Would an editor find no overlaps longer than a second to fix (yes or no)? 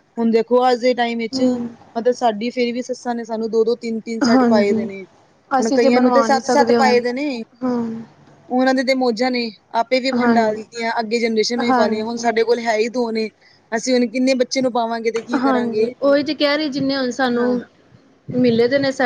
no